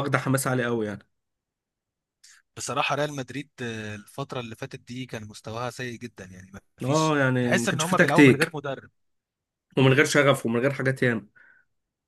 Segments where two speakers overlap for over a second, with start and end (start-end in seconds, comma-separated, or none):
6.8-8.6